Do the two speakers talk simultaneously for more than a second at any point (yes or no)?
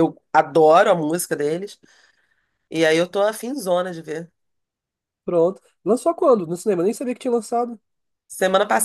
no